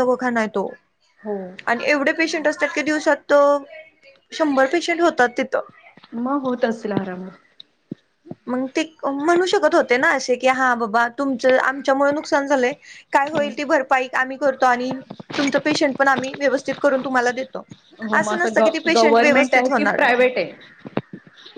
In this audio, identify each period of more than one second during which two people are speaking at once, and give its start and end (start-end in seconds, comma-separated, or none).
18.2-20.2